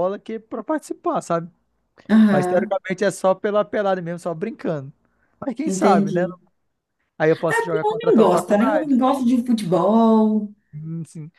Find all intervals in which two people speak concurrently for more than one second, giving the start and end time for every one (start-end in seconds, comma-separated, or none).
7.5-8.9